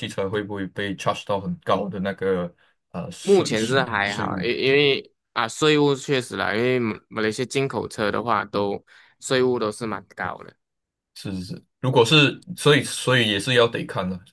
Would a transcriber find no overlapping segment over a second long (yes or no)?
no